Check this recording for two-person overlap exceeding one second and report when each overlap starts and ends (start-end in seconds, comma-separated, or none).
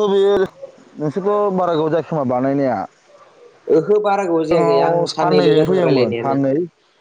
4.5-6.4